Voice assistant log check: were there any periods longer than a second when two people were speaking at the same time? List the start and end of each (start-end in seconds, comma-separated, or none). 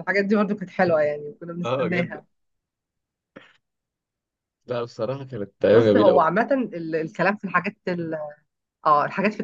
none